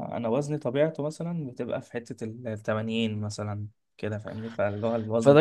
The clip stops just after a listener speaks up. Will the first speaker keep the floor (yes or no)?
no